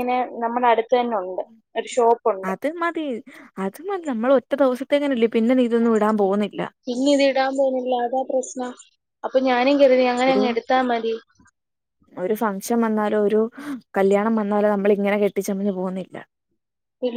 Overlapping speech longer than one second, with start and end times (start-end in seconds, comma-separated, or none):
none